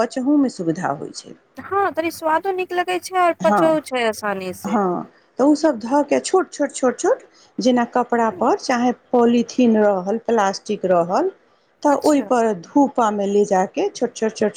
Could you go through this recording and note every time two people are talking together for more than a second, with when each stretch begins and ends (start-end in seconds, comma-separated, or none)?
none